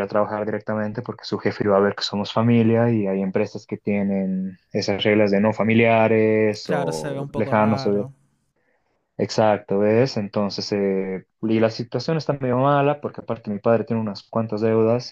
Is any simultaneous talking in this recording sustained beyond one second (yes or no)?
yes